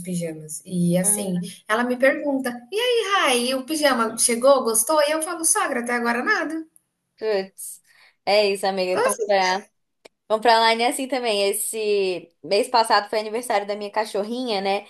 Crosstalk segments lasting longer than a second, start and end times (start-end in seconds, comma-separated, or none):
none